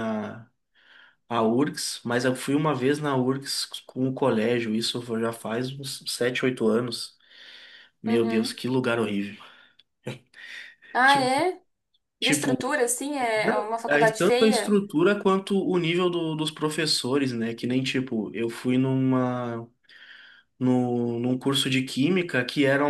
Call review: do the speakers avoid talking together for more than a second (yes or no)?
no